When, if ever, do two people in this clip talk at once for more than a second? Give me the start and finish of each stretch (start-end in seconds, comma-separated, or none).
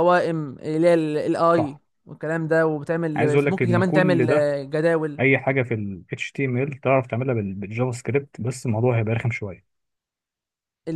3.2-4.5